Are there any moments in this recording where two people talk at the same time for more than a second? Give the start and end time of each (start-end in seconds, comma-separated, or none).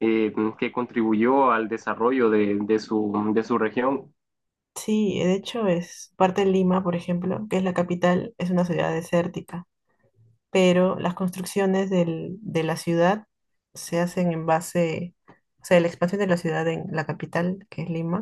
none